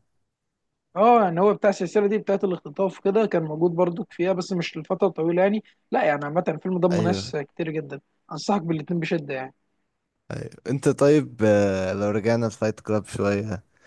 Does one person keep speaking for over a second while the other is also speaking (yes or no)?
no